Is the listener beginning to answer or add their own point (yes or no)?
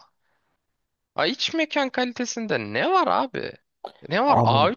no